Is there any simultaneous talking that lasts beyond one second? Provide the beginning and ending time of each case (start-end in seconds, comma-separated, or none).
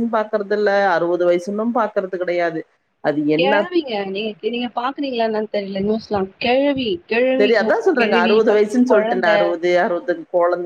7.4-9.4